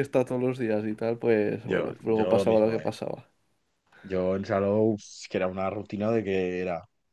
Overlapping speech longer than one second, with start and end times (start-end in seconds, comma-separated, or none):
1.6-2.9